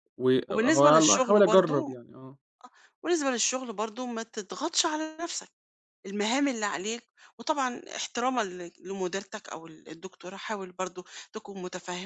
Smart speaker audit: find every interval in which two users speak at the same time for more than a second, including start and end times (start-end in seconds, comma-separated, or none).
0.5-1.9